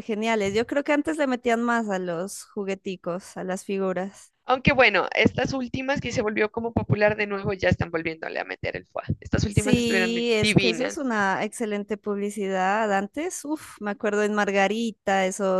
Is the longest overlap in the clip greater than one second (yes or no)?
yes